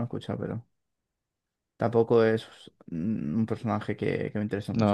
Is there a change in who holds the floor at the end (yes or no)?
yes